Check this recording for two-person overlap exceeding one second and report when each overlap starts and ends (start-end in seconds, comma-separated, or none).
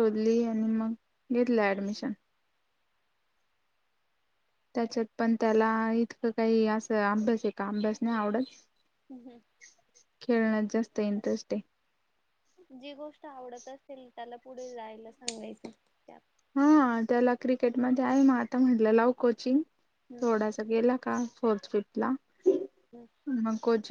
none